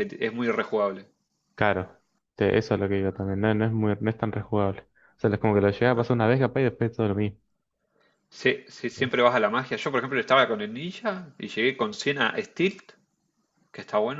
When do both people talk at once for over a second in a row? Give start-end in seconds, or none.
none